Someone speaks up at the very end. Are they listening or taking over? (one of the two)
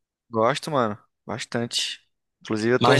listening